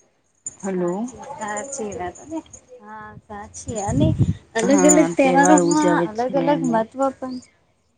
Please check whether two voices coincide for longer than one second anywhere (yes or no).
yes